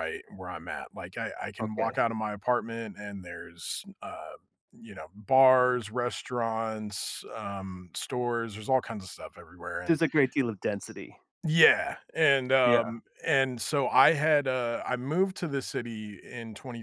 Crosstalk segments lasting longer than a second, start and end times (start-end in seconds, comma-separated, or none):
none